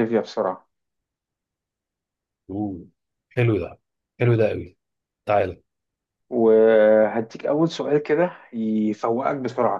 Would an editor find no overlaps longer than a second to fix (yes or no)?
yes